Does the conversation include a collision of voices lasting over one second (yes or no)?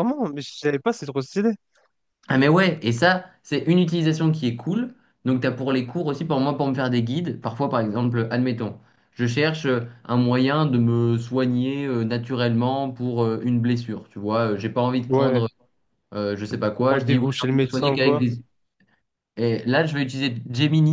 yes